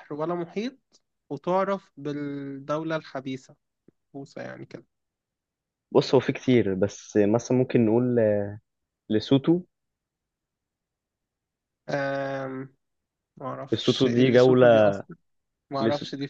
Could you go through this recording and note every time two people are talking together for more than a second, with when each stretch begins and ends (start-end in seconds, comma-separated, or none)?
13.7-15.0